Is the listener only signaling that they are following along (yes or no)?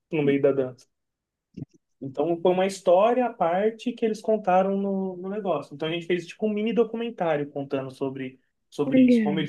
yes